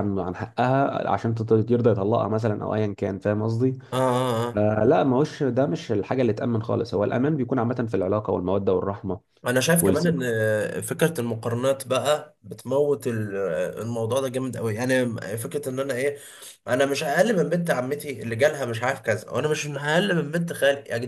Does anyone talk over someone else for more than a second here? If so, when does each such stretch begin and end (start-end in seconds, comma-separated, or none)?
none